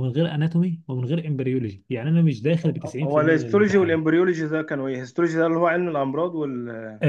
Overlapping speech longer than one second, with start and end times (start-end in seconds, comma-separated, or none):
2.6-4.0